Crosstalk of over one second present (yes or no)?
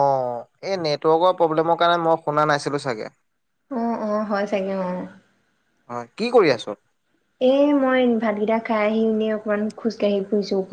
no